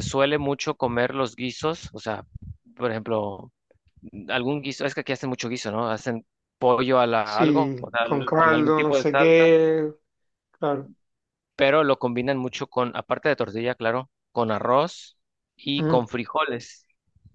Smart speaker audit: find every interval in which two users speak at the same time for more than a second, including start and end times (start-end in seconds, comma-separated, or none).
7.2-9.5